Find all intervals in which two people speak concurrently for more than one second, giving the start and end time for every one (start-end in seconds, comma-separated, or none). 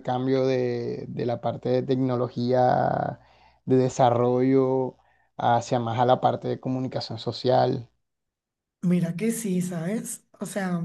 none